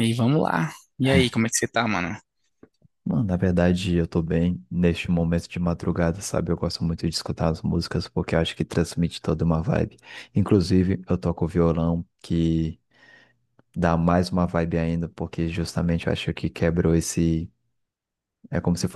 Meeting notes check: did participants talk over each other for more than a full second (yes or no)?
no